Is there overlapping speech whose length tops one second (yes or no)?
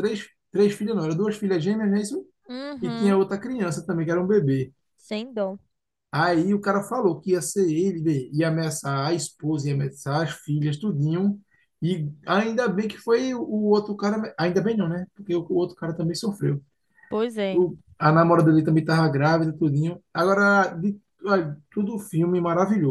no